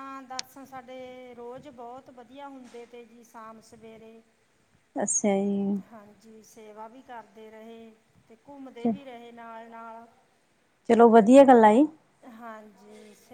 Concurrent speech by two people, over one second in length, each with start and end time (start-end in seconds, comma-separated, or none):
none